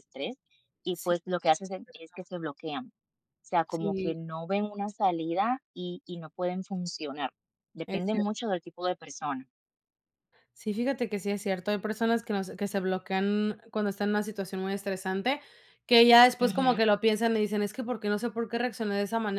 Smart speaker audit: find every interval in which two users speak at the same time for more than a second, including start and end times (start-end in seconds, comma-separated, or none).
none